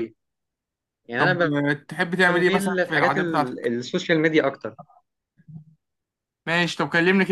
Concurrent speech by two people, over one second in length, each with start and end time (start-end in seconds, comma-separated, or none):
2.3-3.7